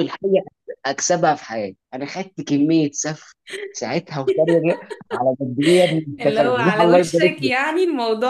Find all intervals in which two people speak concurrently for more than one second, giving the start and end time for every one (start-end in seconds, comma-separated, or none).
6.2-7.5